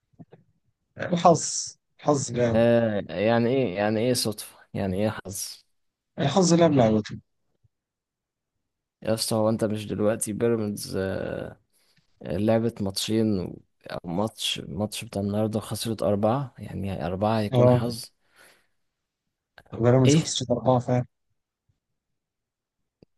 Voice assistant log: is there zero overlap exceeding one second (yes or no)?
yes